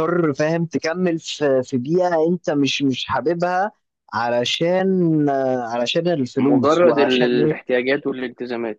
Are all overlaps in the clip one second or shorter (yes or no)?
no